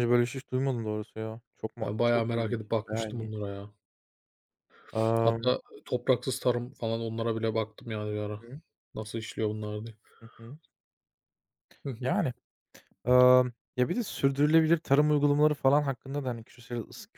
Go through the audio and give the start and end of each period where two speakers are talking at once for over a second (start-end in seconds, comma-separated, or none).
1.8-3.4